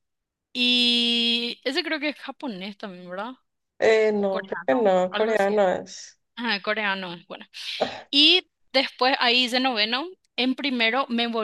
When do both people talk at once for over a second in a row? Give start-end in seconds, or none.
4.2-5.6